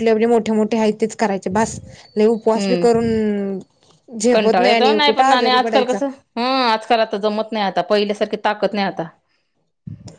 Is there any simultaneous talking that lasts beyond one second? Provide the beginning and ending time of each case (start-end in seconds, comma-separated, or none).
4.3-6.0